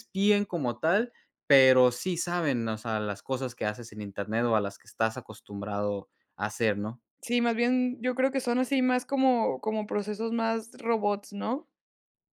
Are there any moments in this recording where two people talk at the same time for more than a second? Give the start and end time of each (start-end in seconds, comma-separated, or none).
none